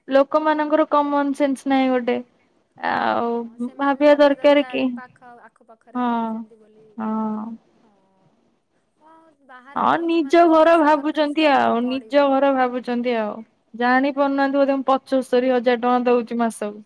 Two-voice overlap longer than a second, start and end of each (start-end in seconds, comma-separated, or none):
9.8-12.2